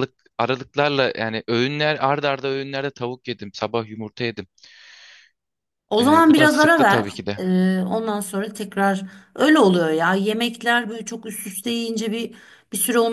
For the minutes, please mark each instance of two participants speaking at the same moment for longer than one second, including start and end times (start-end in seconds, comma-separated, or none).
6.0-7.4